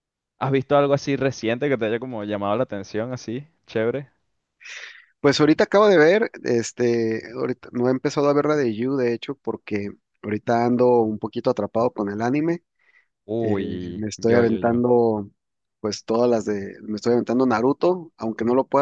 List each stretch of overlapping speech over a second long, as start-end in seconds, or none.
13.4-14.8